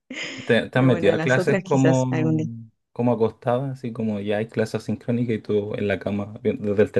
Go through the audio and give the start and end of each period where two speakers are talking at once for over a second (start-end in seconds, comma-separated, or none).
0.7-2.1